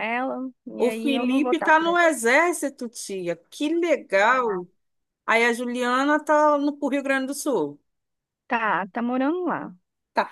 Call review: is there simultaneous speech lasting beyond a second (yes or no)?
yes